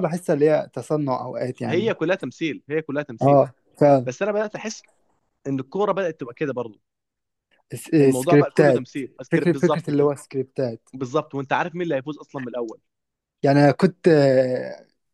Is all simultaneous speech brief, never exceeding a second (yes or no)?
no